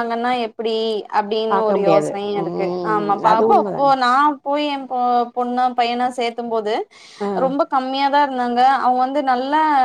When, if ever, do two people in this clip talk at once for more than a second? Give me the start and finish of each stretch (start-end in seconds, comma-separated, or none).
1.5-3.9